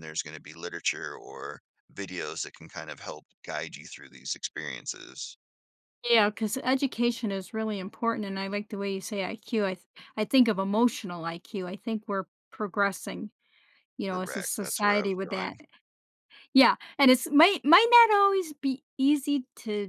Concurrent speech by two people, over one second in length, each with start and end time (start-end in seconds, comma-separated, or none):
14.1-15.6